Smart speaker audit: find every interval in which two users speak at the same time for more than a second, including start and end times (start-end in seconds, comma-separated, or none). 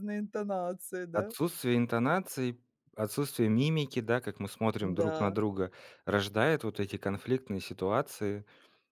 none